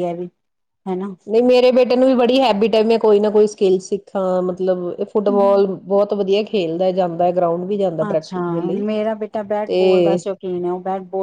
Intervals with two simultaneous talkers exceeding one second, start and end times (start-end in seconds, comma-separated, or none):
none